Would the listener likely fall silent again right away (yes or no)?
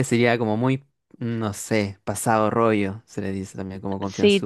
no